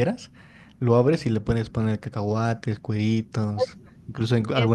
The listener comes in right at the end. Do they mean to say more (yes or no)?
no